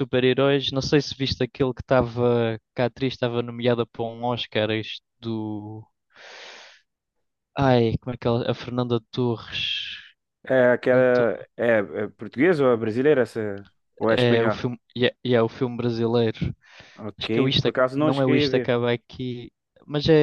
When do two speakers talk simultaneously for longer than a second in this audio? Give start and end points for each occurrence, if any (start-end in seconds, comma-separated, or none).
17.2-18.8